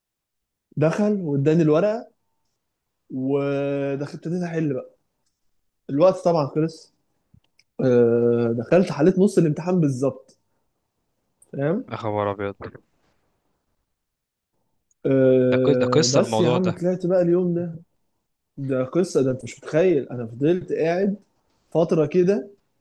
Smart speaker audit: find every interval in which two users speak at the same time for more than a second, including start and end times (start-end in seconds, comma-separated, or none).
15.5-16.8